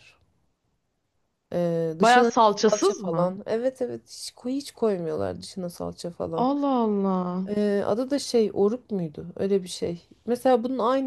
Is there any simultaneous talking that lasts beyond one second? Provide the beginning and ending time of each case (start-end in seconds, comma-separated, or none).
2.0-3.3